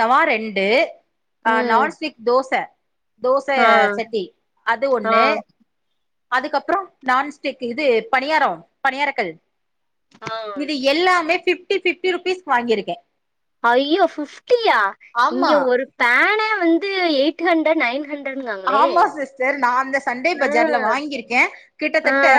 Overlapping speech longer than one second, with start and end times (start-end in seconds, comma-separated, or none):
none